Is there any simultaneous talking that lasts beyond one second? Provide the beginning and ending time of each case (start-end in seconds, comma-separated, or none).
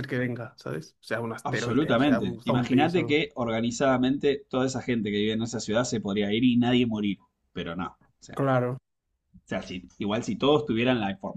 1.4-3.2